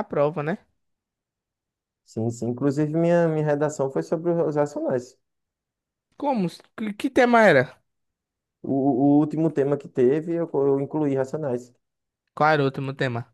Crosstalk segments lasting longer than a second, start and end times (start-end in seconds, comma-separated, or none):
none